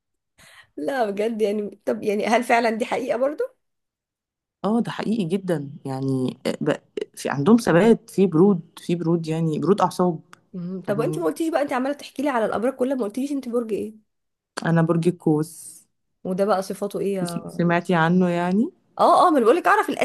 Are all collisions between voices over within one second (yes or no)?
yes